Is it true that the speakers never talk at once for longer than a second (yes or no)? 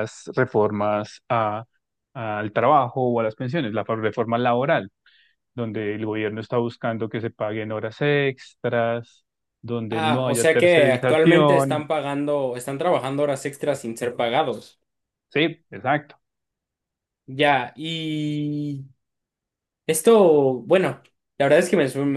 no